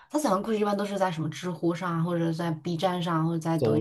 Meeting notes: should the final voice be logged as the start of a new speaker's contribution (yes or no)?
no